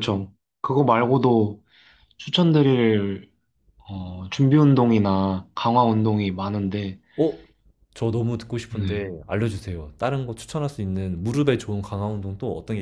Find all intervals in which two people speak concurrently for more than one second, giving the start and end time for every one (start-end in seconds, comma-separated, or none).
none